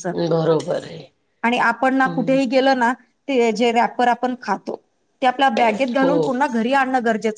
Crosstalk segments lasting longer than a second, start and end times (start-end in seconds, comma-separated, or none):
none